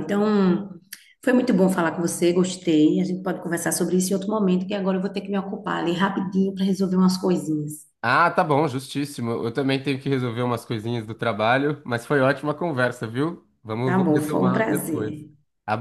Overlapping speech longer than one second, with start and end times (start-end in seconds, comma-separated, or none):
13.8-15.2